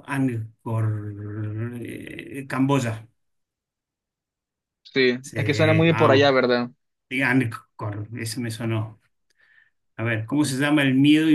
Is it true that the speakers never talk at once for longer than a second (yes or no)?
no